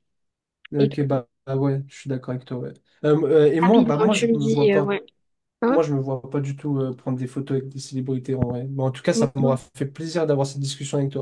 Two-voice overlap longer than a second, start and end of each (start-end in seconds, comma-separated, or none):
3.6-5.0